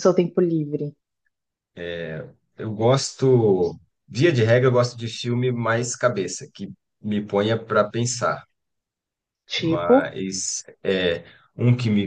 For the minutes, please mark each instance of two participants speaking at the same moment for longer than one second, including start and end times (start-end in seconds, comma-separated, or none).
none